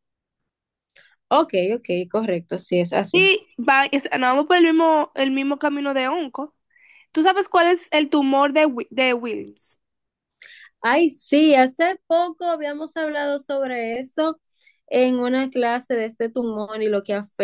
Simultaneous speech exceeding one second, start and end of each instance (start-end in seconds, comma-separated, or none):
none